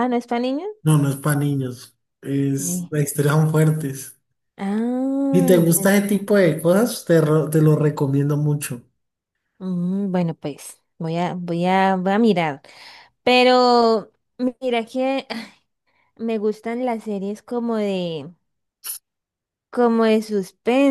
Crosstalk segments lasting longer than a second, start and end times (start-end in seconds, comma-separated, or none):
none